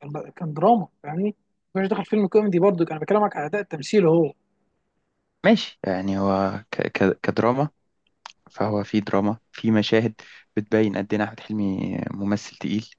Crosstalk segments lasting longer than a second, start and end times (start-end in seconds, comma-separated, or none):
none